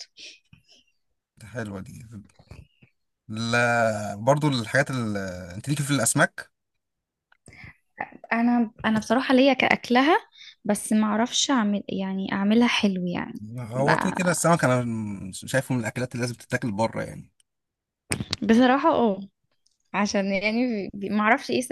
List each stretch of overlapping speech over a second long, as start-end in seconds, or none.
none